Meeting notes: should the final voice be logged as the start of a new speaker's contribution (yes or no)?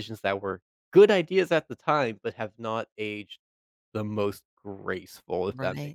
yes